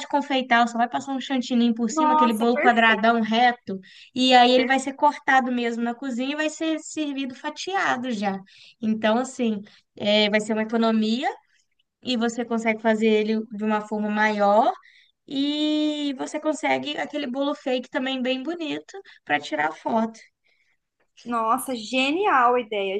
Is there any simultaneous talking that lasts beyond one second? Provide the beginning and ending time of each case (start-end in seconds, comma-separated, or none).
1.9-3.1